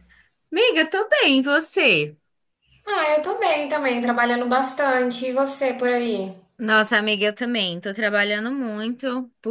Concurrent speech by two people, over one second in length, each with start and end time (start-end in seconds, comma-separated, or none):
none